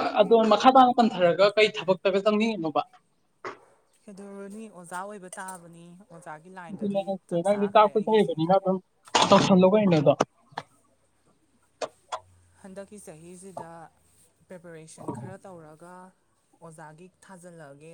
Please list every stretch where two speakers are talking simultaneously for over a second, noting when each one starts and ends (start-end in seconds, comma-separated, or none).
6.7-8.4